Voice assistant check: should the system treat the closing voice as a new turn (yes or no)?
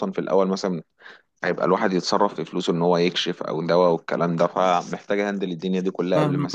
yes